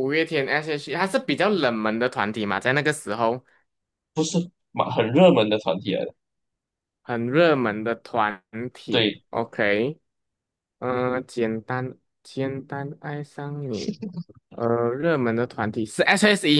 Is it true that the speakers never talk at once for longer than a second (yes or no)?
yes